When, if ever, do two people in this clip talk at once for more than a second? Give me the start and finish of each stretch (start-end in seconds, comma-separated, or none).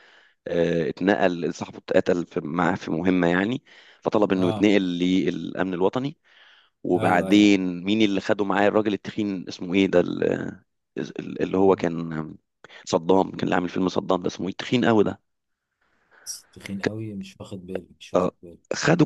none